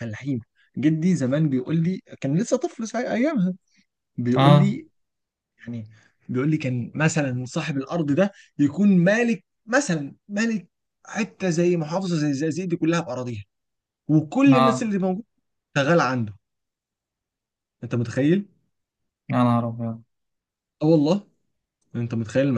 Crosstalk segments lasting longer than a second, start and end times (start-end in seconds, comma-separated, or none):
none